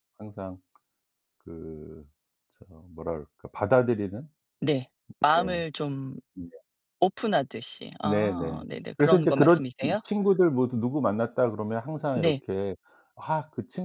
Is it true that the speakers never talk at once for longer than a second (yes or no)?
no